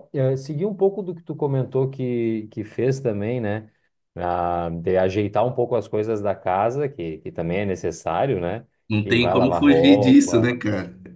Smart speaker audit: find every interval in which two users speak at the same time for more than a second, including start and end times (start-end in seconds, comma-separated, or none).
9.1-10.6